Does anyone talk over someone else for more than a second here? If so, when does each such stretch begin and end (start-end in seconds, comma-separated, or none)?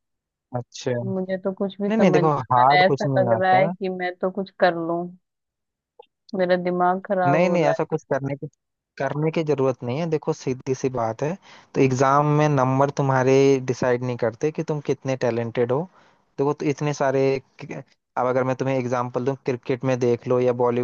2.0-3.7